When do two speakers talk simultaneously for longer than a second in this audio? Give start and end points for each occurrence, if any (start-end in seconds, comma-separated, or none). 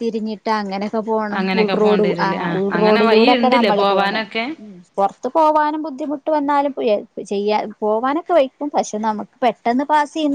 1.4-4.2